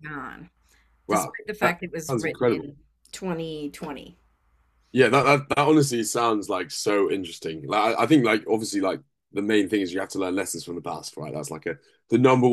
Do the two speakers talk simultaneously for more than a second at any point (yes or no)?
yes